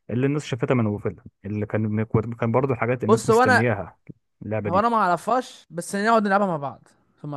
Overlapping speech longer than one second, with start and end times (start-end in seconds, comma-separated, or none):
none